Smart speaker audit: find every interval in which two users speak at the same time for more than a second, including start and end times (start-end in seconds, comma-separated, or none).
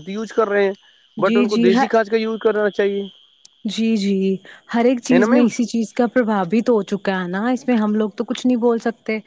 none